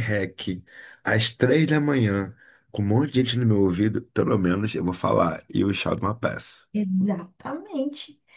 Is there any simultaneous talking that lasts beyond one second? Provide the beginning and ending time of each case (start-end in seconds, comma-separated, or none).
none